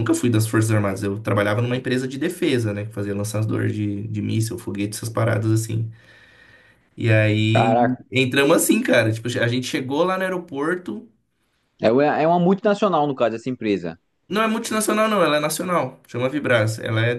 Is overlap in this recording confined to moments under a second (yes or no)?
yes